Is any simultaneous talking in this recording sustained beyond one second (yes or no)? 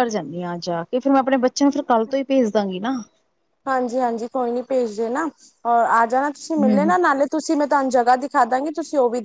no